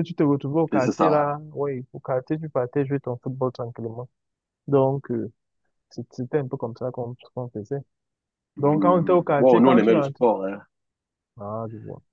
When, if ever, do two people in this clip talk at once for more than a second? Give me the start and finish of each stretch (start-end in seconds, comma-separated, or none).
8.6-10.2